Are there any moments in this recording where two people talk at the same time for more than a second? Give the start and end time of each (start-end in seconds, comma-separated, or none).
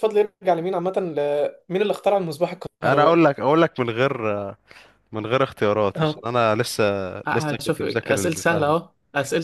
7.3-8.7